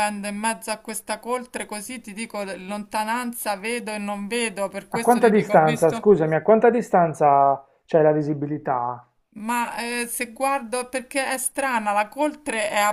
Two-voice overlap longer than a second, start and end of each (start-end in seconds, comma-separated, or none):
4.9-6.1